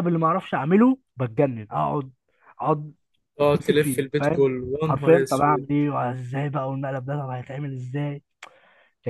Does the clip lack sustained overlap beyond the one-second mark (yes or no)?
no